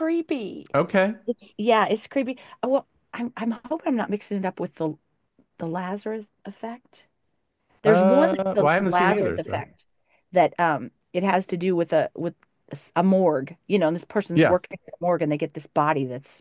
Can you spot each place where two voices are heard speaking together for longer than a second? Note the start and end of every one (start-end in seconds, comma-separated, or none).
7.8-9.6